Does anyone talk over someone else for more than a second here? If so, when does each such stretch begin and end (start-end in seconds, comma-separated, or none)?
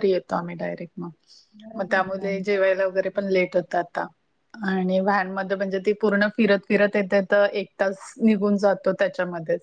1.6-3.3